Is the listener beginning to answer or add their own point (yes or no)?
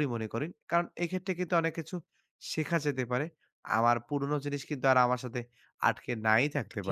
yes